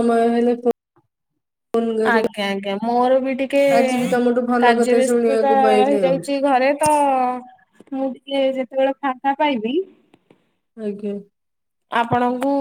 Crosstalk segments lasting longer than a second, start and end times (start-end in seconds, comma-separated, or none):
4.6-6.2